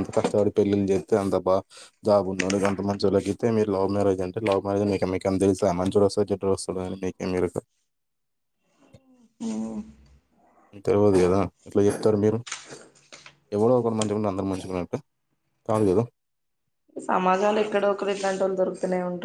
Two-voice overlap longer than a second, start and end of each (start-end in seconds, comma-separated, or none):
none